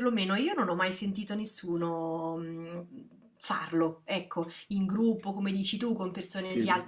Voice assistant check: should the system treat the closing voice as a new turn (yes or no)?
no